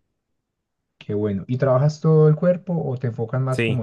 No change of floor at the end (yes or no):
no